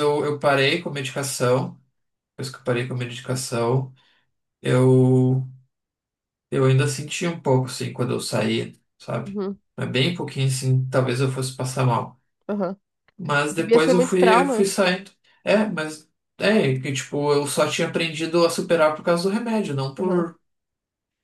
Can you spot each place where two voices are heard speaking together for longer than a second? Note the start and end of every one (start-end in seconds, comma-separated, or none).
13.5-14.7